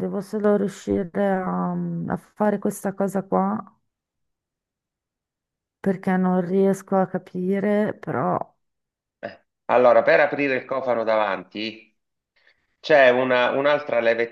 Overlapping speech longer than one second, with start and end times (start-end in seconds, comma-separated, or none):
none